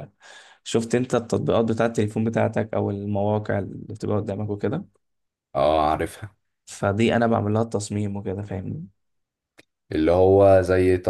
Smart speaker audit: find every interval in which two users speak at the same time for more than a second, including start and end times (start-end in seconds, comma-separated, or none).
none